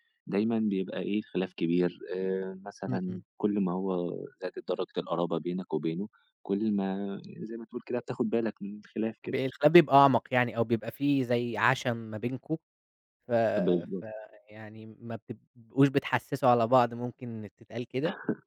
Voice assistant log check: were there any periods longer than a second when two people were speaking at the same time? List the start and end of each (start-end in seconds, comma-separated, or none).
none